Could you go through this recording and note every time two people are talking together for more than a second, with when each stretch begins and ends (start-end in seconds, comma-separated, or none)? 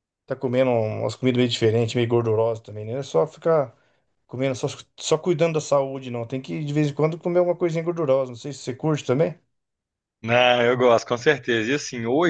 none